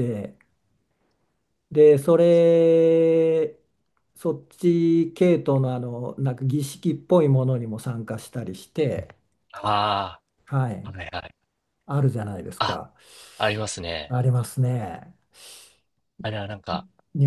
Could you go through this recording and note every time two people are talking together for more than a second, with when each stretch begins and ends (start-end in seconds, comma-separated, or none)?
none